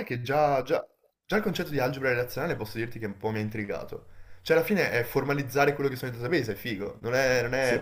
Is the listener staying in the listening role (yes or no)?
no